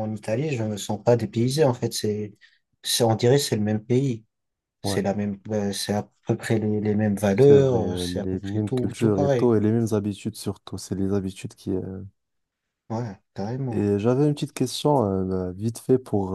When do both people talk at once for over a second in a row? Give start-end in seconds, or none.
7.3-9.5